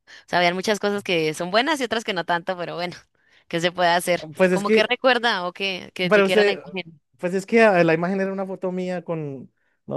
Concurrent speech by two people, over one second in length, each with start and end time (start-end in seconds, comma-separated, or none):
none